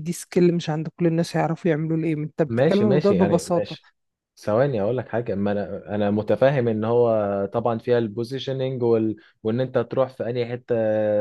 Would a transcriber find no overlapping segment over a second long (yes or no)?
no